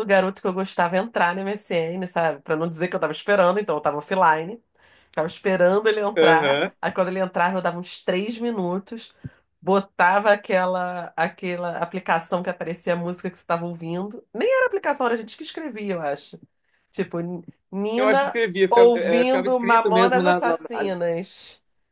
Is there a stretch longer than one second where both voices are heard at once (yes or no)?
yes